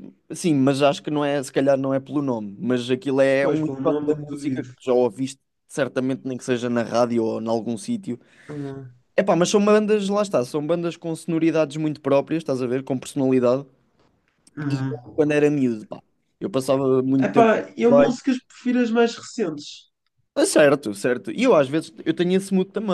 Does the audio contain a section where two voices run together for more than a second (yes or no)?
yes